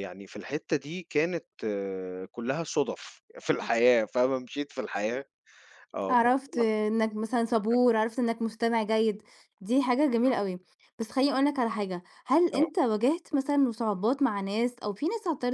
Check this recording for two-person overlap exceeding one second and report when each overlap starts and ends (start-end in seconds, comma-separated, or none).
none